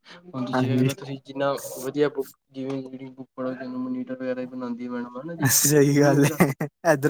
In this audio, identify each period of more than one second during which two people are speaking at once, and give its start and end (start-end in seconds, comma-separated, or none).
none